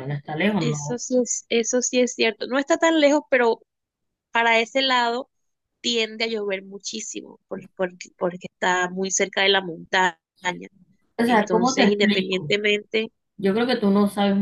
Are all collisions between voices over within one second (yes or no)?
no